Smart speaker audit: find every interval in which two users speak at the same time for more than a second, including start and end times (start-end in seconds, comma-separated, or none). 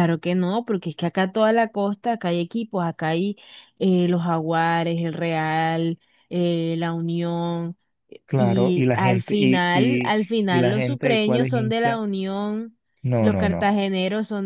8.3-12.0